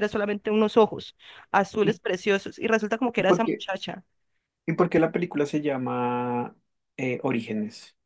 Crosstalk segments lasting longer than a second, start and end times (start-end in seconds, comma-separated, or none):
none